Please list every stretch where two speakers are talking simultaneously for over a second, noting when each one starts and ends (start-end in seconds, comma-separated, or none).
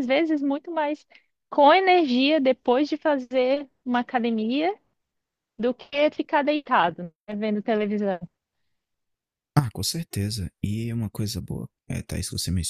none